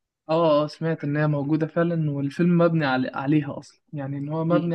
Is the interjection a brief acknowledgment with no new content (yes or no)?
yes